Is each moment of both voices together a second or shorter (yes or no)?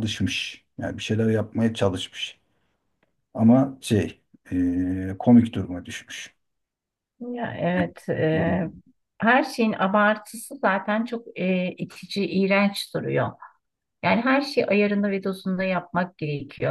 yes